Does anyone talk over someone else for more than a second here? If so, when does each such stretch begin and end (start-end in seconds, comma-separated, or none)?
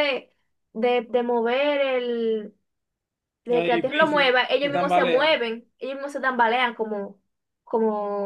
3.5-5.4